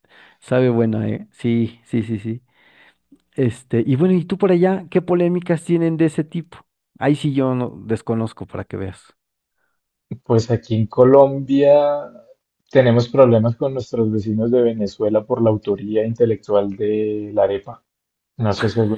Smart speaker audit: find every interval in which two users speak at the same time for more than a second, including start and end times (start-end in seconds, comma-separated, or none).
none